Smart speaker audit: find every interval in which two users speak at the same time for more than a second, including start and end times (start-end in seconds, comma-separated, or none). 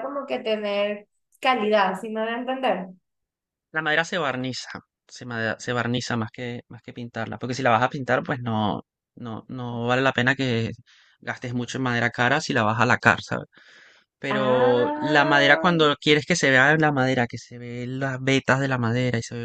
14.3-15.7